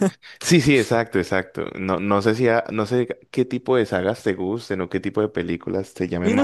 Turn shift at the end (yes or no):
yes